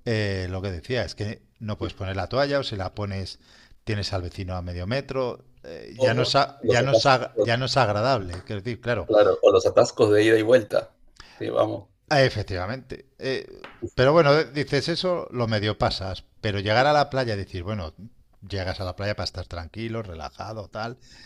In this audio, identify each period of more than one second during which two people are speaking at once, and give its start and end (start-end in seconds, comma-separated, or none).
6.0-7.5